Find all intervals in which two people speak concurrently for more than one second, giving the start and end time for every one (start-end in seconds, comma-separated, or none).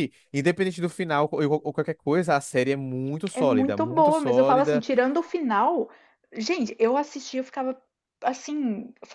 3.3-4.8